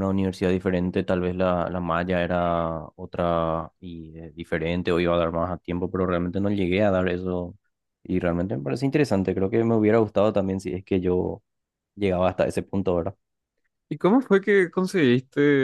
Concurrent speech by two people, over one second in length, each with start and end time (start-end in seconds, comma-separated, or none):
none